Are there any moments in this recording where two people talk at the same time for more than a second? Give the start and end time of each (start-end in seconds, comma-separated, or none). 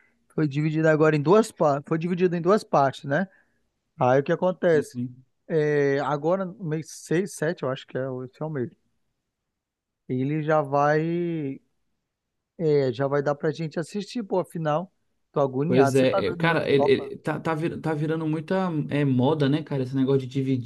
15.7-17.1